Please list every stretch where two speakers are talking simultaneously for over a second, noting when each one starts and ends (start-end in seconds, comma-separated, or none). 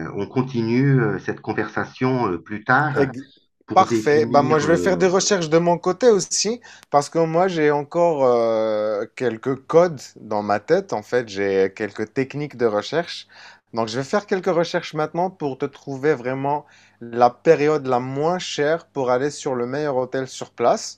3.7-5.0